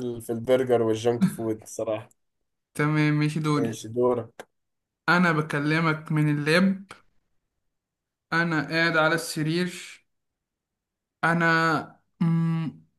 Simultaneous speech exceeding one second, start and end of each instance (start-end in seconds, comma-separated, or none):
none